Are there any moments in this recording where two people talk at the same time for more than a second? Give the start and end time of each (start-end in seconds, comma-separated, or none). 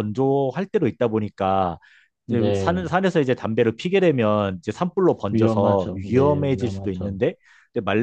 5.3-7.2